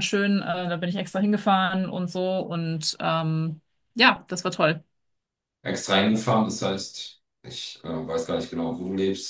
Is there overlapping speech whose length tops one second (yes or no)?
no